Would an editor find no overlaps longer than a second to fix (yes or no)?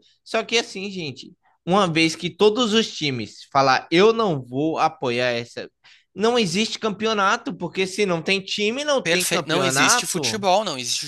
no